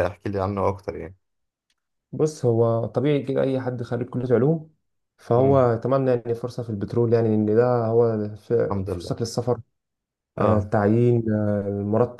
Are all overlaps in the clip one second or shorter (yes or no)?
yes